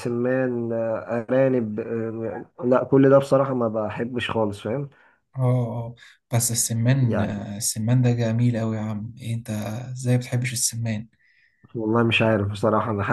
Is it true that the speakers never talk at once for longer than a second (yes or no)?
yes